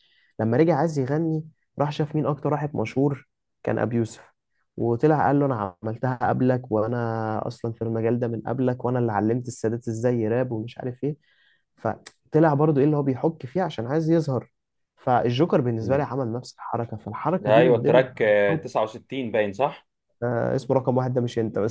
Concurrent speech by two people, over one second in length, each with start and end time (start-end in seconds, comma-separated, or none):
17.4-18.7